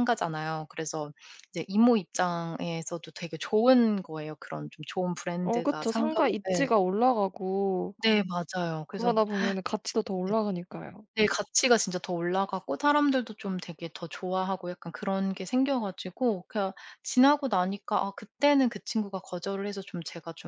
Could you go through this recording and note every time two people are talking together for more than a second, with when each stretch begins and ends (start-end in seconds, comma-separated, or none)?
5.4-6.8